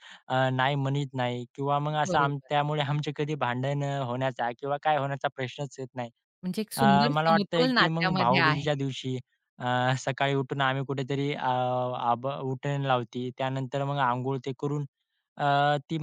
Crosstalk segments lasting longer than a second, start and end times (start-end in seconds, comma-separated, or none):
6.8-8.6